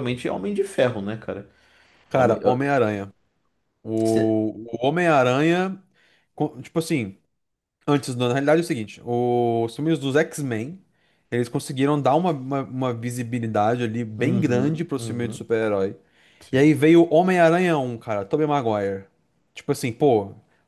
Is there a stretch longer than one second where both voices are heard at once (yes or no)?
yes